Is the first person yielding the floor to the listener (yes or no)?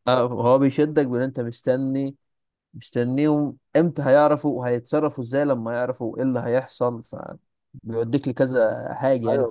yes